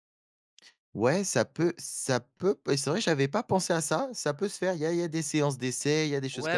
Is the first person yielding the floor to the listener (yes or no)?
yes